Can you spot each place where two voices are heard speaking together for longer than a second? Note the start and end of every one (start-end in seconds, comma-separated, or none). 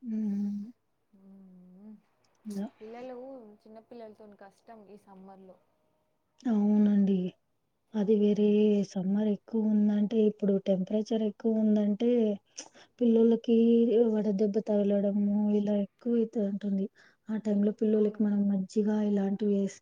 none